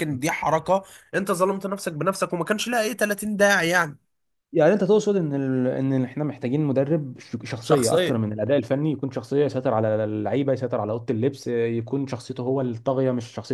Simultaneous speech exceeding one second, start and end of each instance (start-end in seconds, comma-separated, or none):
none